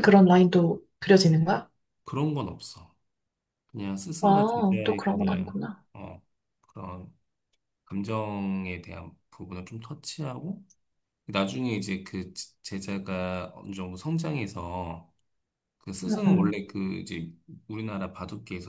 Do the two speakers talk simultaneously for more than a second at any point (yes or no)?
yes